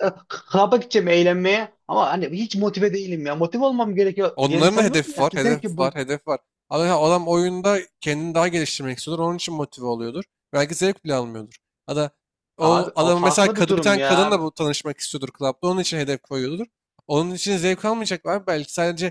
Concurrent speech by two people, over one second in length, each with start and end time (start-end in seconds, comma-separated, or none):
4.4-5.8, 12.6-14.4